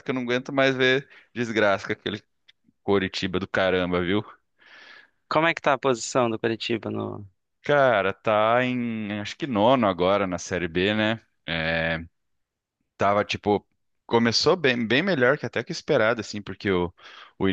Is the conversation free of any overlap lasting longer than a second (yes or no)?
yes